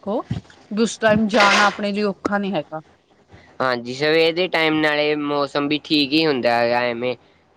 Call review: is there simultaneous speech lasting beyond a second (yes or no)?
no